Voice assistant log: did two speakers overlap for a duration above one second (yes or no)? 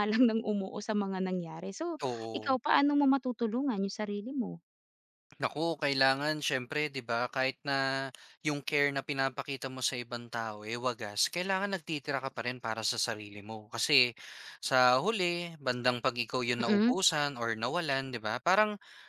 no